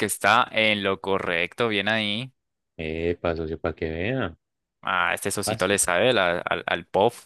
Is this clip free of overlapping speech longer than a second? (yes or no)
yes